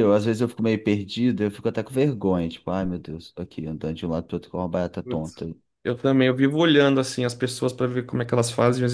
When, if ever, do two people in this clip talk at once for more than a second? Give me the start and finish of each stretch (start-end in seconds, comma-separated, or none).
none